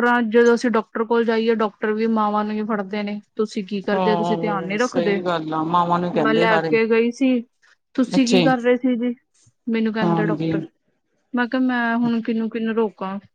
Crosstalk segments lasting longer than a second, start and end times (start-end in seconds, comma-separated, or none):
3.9-5.2